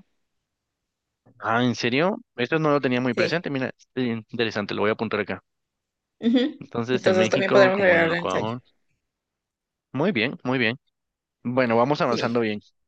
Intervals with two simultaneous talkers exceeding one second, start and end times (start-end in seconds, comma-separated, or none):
6.6-8.5